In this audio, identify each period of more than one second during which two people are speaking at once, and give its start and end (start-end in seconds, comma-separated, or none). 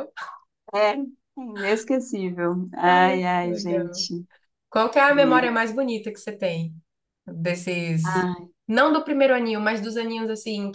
2.8-4.1